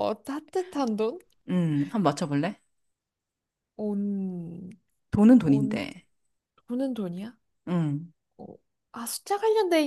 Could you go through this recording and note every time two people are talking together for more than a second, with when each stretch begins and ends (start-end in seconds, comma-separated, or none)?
none